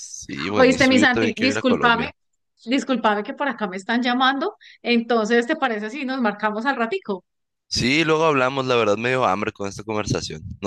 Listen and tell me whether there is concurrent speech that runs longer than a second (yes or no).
yes